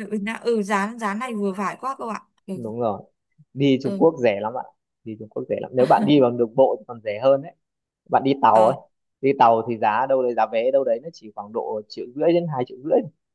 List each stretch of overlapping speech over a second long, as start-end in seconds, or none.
none